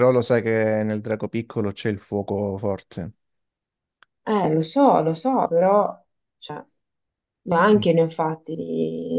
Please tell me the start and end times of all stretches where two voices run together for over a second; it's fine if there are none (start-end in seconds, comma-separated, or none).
none